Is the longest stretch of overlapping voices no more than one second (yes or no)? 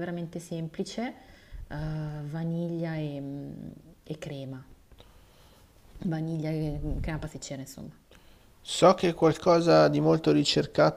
yes